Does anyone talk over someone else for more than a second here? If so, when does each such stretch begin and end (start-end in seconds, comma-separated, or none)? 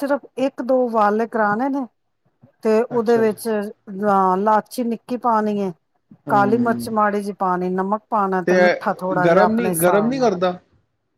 8.6-10.3